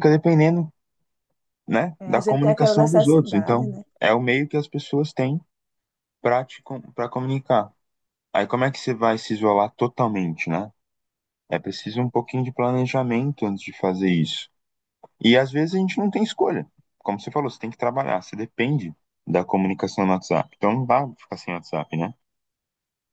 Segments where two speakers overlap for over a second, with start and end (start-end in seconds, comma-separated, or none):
2.0-3.8